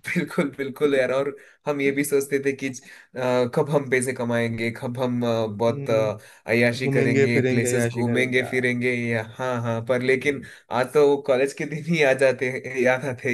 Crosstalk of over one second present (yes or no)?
yes